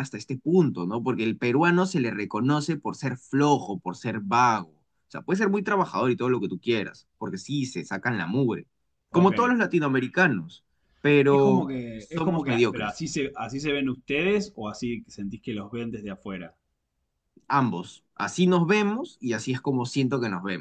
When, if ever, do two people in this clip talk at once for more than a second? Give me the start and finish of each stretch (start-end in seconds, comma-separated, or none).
11.3-13.0